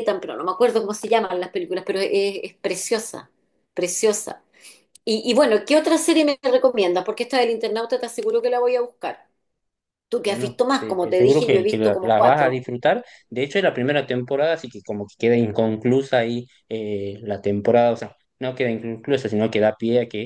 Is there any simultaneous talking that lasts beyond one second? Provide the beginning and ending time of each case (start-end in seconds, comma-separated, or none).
10.2-12.6